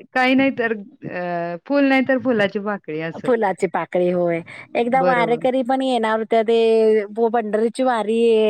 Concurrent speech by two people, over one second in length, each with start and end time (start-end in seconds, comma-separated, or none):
none